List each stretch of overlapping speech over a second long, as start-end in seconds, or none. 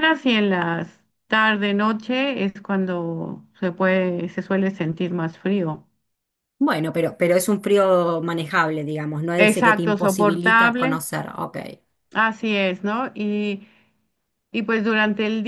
9.4-10.9